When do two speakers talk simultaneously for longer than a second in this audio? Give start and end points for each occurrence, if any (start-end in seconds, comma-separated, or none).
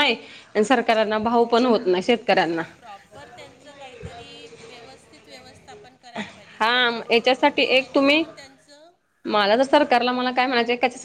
6.6-8.2